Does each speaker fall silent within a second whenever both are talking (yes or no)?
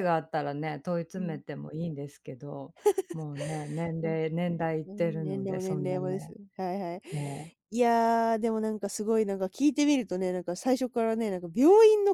no